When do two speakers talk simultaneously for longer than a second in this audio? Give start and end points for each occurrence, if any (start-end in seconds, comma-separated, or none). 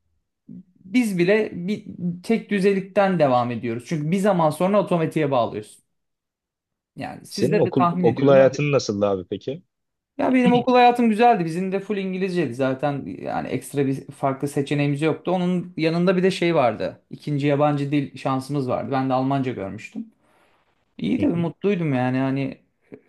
7.3-8.6